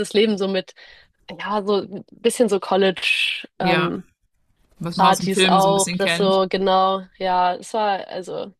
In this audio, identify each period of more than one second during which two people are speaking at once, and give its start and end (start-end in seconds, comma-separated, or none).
5.0-6.4